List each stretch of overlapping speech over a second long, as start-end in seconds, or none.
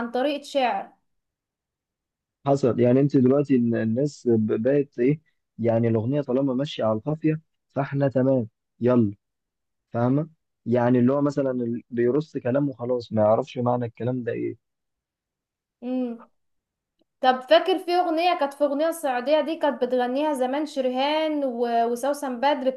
none